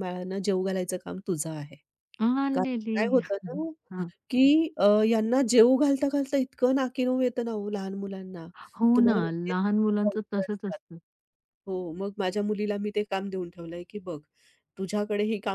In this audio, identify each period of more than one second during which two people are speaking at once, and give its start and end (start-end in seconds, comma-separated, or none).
8.9-10.8